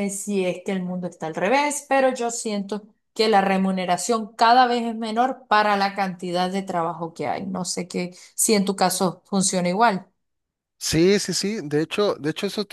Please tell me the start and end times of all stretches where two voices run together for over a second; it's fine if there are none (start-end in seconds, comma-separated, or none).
none